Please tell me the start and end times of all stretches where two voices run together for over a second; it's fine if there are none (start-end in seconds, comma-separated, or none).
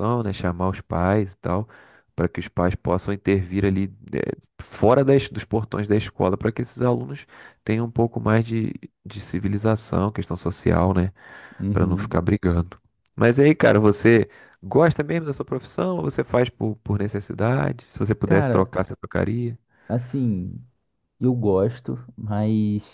none